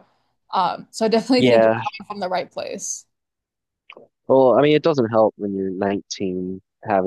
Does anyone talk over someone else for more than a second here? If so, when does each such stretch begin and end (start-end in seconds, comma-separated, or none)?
none